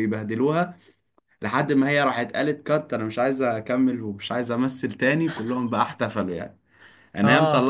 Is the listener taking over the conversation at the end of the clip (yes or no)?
no